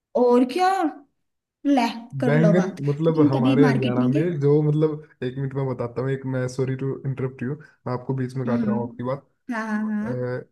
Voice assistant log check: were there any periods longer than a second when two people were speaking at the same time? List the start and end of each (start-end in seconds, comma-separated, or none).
2.2-4.3